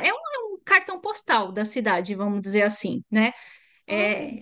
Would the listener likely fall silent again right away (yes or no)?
yes